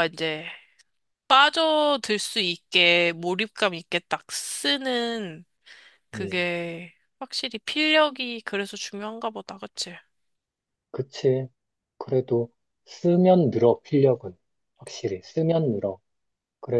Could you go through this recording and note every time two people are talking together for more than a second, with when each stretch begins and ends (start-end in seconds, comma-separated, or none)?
none